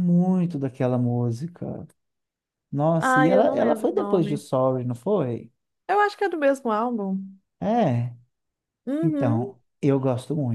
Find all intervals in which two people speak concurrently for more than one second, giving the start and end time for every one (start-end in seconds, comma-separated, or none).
3.0-4.4